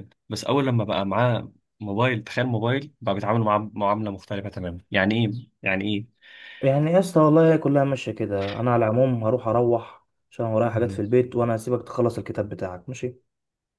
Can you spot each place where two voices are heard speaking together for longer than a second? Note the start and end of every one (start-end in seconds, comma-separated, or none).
none